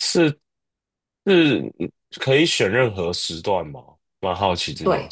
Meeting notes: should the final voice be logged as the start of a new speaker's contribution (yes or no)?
yes